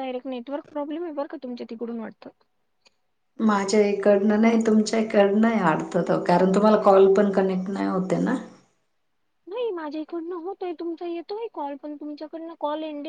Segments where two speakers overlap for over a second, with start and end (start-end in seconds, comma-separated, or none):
none